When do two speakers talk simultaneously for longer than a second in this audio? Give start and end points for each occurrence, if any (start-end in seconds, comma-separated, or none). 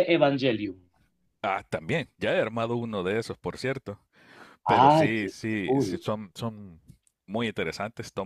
4.7-6.1